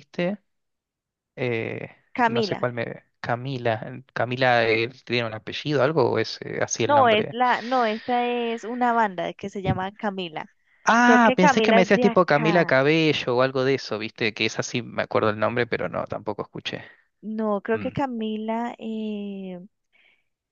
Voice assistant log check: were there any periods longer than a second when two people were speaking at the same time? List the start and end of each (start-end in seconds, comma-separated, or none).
11.0-12.8